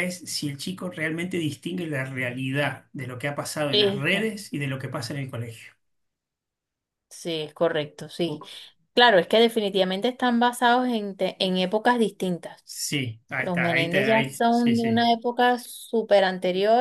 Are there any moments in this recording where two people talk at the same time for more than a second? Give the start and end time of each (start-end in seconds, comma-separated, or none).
13.4-15.1